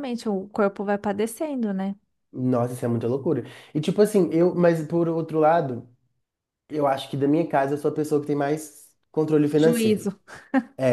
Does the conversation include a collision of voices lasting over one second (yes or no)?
no